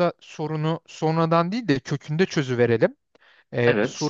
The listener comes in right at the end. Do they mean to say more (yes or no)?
no